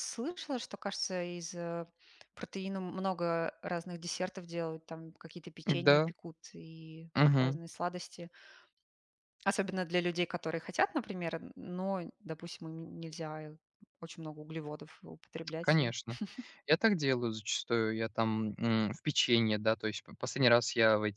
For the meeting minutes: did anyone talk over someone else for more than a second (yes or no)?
no